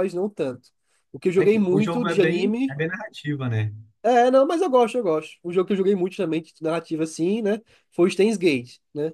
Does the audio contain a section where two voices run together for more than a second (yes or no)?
yes